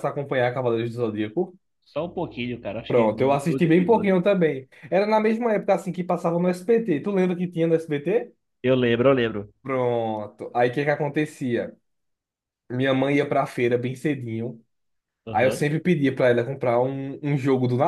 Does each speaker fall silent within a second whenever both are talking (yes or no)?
no